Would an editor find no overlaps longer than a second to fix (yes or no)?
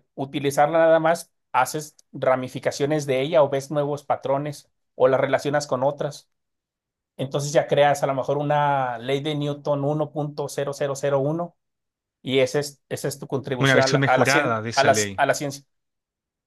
no